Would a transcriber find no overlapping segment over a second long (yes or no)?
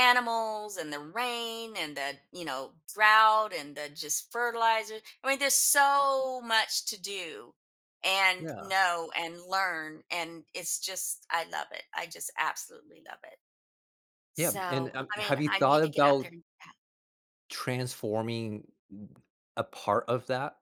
no